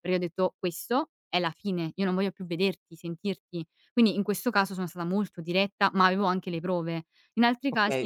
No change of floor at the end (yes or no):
no